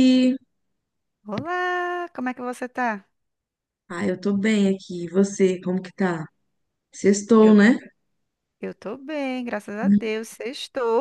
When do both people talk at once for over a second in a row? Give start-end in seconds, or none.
none